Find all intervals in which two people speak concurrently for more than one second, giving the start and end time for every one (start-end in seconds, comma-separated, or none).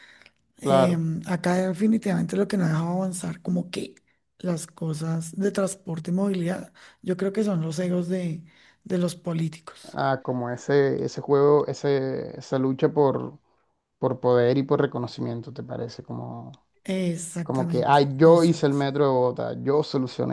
17.4-18.8